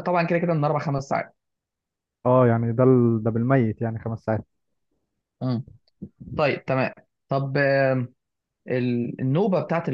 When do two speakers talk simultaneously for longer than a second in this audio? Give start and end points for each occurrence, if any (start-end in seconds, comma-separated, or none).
none